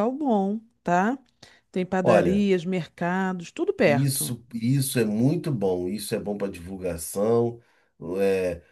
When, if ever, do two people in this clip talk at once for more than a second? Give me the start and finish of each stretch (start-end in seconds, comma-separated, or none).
none